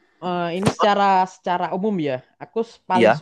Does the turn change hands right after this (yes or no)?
no